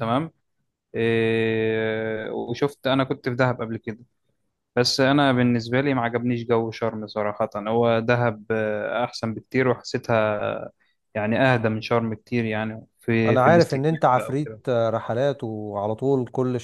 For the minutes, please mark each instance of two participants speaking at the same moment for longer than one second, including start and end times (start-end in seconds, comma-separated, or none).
13.3-14.6